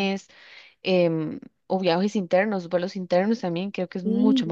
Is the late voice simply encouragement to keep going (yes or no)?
no